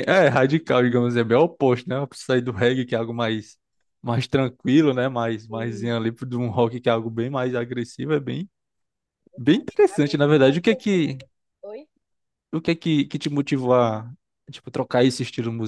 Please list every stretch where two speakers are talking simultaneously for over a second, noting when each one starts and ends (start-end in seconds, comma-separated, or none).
9.8-11.2